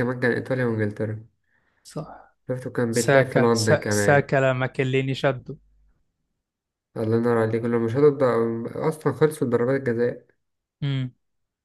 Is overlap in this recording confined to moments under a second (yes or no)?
no